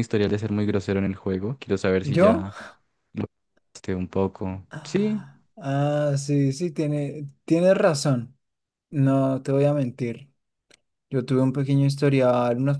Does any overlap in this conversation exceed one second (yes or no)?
no